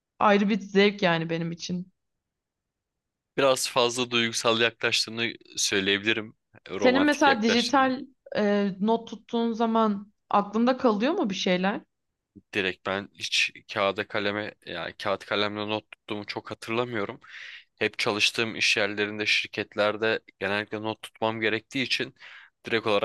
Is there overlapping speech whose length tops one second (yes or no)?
yes